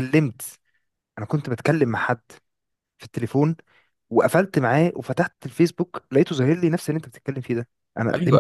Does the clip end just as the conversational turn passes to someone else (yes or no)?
yes